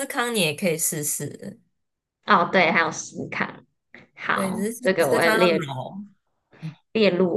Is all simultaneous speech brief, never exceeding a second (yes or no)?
no